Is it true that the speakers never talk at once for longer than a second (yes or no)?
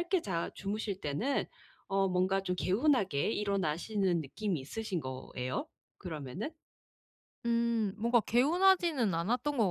yes